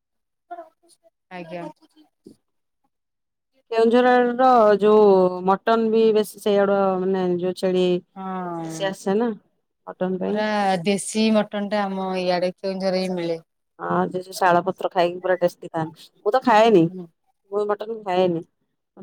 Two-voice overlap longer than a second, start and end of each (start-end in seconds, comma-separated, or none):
none